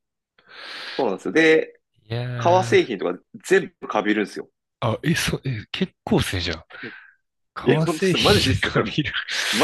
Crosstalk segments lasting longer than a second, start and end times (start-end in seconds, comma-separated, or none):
7.6-8.9